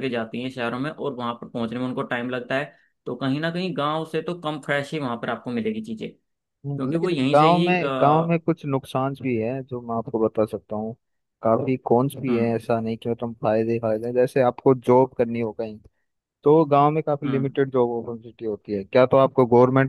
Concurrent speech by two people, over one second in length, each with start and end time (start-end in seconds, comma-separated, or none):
6.7-8.4